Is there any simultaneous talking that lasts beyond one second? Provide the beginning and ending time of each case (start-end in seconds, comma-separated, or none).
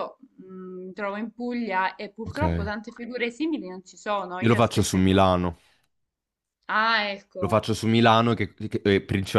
none